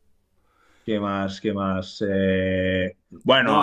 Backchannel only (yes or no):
yes